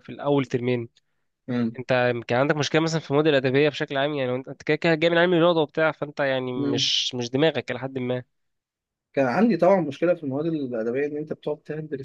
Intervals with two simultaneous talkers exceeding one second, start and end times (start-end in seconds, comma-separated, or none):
none